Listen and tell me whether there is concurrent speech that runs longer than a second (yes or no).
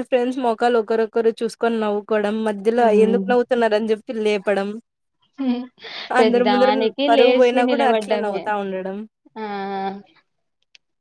yes